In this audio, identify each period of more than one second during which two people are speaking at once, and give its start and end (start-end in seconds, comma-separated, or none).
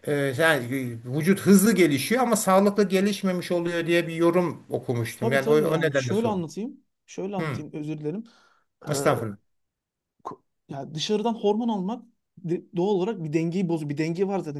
5.2-6.4